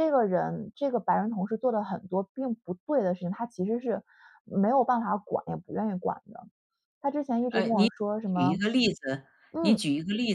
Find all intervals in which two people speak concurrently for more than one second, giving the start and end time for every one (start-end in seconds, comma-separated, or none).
none